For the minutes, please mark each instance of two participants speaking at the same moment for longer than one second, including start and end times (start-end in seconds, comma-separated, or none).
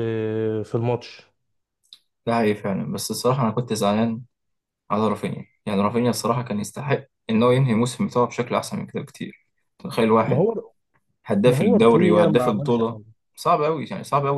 11.4-13.0